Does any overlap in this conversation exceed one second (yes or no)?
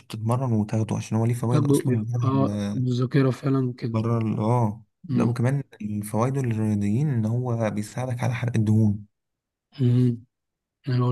yes